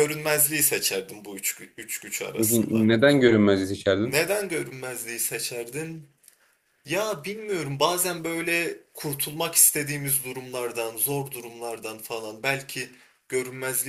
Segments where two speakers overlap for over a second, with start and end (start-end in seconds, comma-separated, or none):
none